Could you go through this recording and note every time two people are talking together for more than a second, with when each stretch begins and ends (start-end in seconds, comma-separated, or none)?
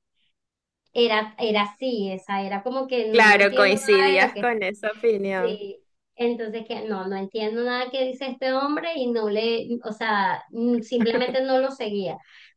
3.1-4.5